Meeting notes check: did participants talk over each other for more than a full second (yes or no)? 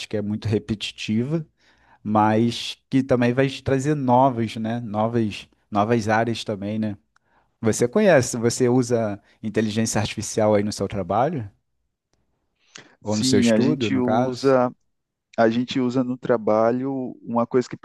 yes